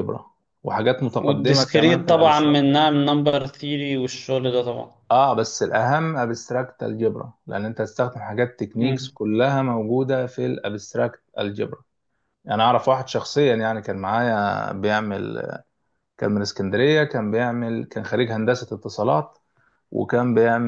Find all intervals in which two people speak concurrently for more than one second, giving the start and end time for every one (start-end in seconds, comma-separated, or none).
1.2-2.8